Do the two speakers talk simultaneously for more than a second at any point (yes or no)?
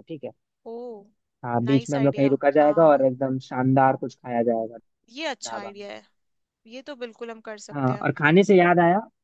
yes